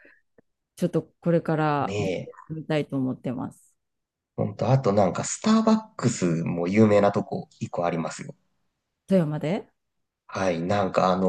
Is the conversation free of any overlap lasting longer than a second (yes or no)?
yes